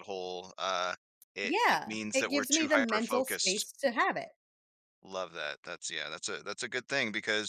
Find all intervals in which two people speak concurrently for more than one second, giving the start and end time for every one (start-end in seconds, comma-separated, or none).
1.4-3.6